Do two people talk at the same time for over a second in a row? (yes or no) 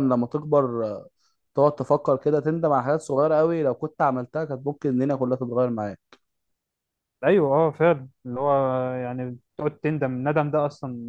no